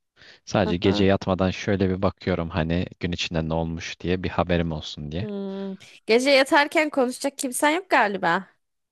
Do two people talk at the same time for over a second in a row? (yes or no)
no